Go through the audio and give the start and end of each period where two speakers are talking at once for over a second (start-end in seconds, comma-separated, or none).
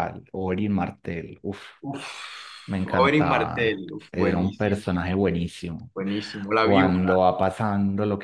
2.7-4.9